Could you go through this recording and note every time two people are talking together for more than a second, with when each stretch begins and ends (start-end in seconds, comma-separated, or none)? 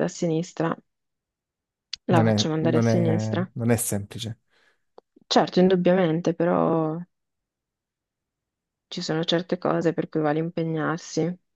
2.1-3.5